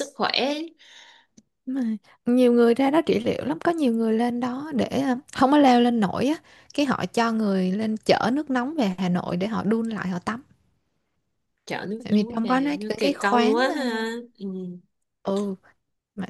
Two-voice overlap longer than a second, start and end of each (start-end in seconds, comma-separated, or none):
12.0-13.8